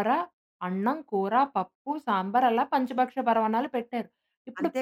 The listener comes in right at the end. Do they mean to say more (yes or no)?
no